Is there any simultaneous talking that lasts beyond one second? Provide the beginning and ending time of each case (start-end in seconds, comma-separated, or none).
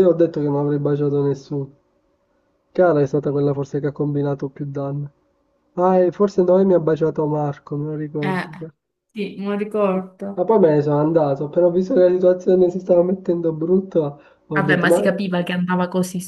none